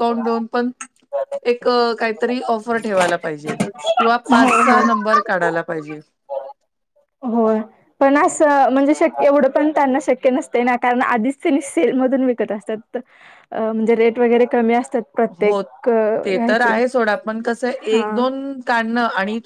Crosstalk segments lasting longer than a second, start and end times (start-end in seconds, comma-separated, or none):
none